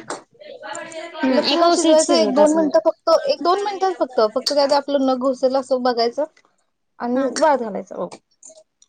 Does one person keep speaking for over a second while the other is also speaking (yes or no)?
yes